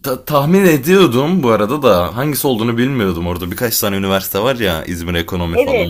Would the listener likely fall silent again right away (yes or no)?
no